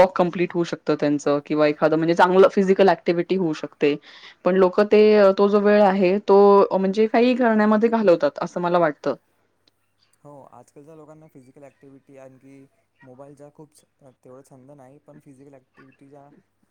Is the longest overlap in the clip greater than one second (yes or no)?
no